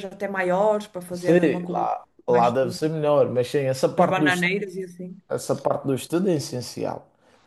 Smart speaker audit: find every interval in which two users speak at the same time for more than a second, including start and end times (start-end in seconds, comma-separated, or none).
1.1-2.8